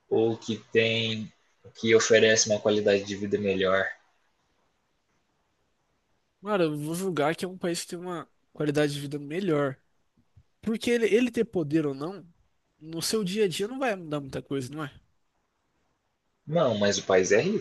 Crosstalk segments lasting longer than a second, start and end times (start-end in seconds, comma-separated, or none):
none